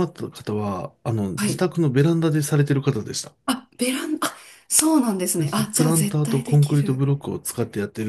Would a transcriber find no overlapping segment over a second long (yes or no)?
no